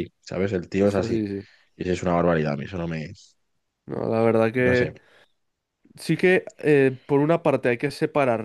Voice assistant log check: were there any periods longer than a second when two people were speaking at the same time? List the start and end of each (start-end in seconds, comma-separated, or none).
none